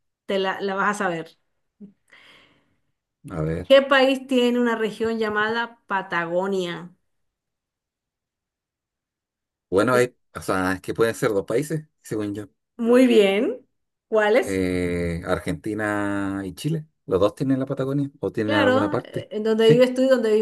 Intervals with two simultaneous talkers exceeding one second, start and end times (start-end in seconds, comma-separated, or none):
18.4-19.9